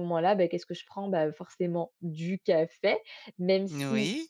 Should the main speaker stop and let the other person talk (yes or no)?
no